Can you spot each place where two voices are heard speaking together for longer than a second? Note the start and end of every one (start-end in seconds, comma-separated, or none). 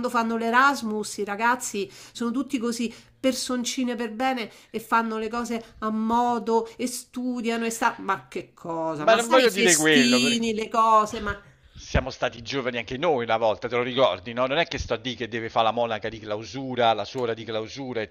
9.0-10.4